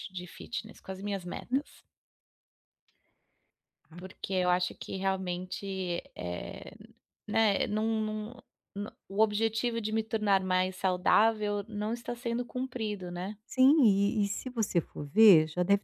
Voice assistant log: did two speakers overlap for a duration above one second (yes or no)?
no